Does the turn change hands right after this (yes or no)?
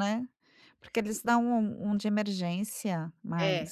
yes